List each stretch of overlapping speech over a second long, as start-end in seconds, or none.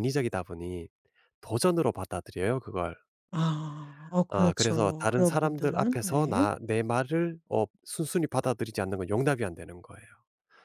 4.3-6.5